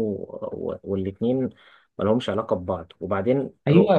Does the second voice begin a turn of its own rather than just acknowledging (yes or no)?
yes